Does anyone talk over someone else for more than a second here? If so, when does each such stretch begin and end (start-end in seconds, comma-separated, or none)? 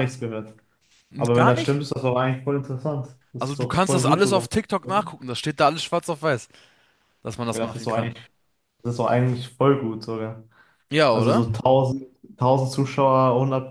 3.4-4.9